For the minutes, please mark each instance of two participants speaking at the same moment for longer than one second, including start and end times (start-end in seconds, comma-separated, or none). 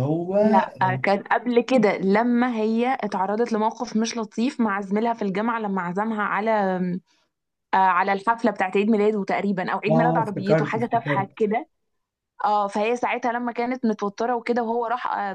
9.9-11.3